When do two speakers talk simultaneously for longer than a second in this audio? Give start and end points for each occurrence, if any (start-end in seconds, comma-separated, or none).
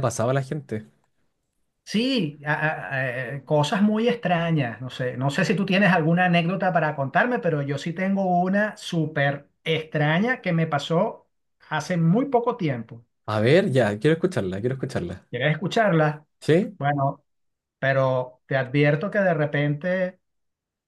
none